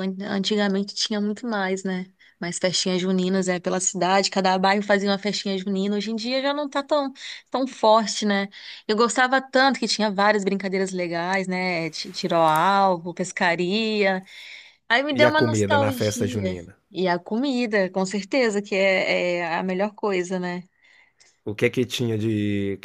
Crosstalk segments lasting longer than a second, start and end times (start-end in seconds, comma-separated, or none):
15.1-16.6